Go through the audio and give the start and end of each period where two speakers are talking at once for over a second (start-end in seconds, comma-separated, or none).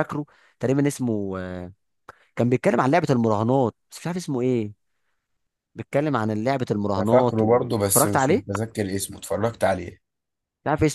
7.0-8.4